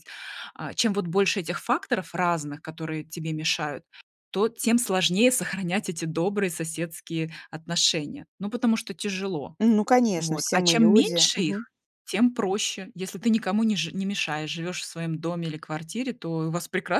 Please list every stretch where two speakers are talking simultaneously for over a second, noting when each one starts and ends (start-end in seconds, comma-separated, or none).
10.2-11.7